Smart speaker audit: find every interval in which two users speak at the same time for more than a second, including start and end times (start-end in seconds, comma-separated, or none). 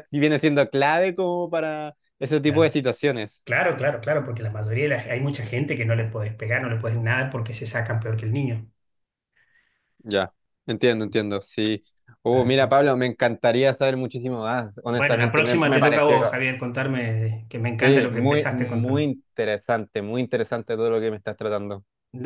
14.9-16.4, 17.8-19.1